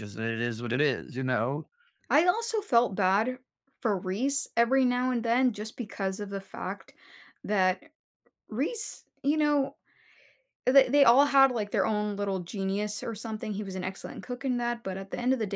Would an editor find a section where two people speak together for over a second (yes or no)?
no